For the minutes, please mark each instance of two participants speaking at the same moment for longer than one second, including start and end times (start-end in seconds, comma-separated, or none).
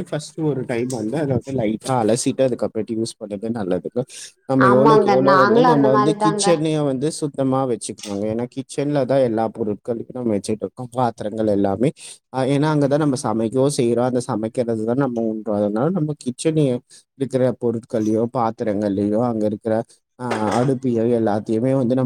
4.7-6.5